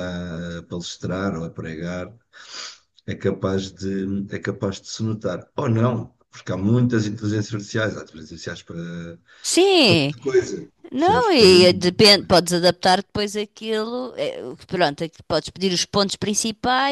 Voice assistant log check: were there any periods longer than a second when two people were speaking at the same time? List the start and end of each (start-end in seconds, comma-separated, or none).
10.9-12.4